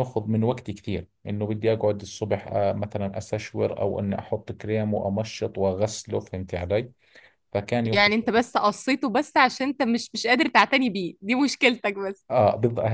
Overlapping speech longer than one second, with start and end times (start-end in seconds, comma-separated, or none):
none